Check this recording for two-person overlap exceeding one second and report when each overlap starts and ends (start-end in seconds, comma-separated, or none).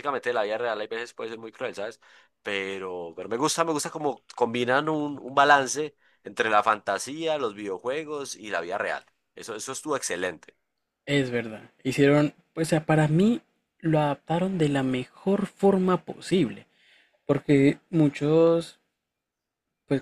none